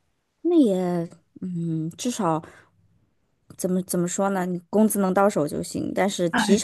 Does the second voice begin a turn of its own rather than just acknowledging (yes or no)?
no